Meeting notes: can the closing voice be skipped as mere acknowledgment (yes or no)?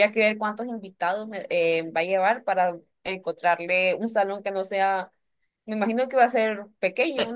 no